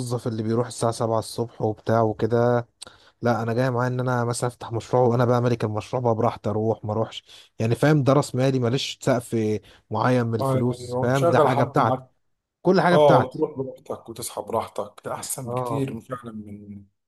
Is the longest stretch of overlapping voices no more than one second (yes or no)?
no